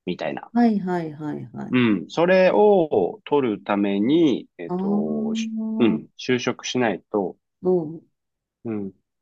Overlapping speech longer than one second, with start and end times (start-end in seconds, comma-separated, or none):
4.7-6.1